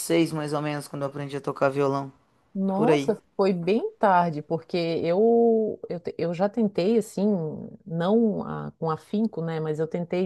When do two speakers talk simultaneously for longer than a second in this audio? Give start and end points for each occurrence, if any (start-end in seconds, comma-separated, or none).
none